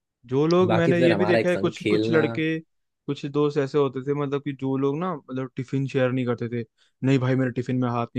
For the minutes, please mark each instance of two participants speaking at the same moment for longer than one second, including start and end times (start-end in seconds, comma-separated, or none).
0.7-2.2